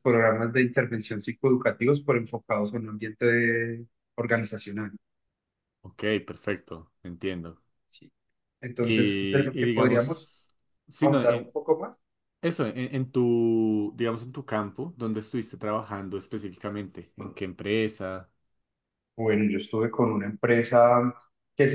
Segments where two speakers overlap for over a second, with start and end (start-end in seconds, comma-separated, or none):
8.8-10.3